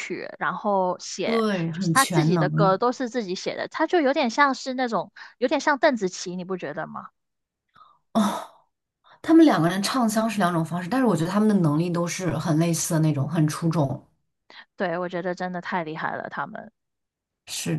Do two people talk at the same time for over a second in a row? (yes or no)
yes